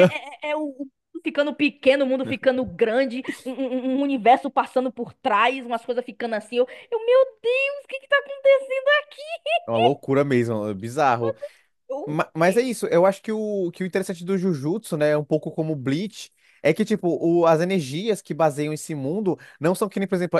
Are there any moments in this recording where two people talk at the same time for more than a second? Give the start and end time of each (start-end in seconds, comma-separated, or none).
none